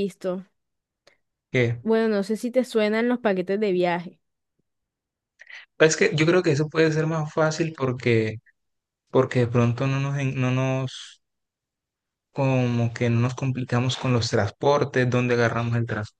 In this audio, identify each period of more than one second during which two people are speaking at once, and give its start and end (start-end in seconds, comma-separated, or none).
none